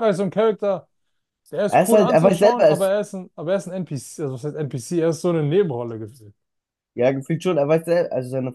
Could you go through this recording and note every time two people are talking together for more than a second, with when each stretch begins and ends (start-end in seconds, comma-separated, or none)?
1.7-2.9